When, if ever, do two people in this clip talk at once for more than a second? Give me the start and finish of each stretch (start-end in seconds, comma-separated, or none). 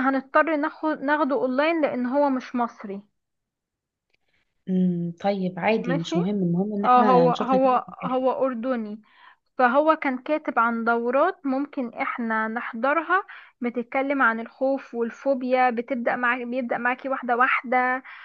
6.8-8.2